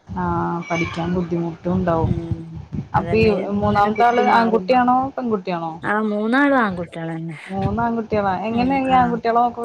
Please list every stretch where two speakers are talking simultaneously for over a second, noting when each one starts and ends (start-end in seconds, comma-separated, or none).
3.0-4.7